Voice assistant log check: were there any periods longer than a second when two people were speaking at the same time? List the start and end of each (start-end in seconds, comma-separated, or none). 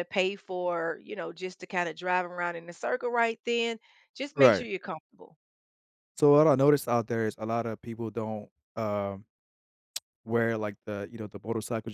none